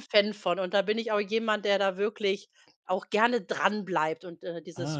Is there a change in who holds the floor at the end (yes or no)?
no